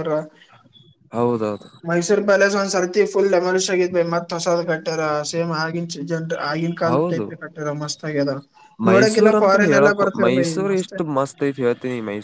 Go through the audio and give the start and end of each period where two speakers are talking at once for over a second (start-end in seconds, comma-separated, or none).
8.9-10.9